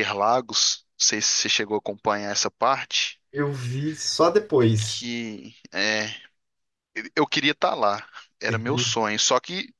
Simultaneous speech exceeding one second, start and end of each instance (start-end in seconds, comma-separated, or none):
none